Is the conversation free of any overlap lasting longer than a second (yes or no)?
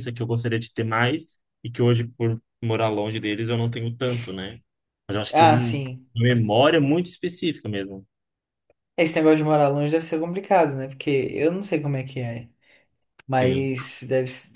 yes